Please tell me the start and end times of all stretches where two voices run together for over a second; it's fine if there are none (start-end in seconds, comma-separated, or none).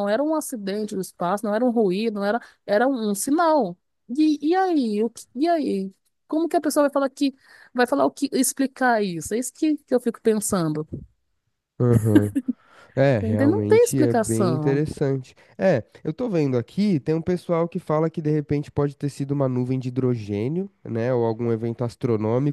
13.2-14.8